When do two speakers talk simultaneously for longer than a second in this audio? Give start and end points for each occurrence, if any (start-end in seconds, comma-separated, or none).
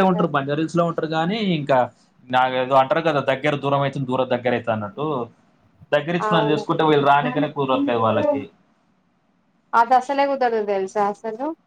7.1-8.3